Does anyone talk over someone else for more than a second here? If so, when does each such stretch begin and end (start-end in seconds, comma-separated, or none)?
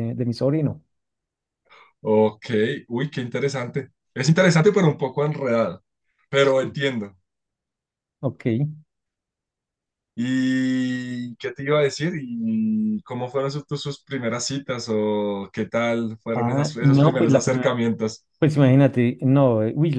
16.3-17.8